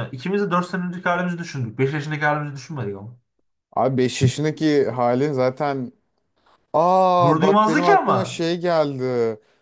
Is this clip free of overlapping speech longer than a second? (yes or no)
no